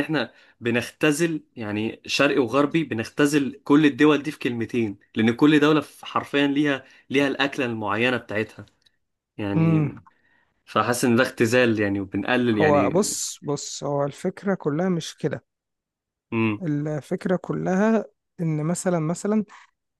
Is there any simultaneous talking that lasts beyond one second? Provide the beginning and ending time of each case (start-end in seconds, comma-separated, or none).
none